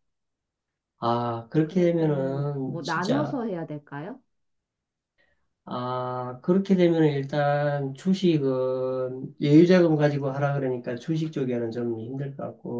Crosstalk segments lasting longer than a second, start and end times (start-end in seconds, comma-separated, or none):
1.6-3.4